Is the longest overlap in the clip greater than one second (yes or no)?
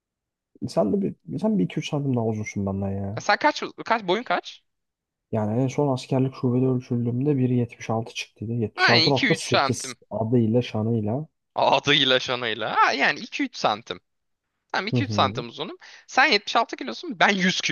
yes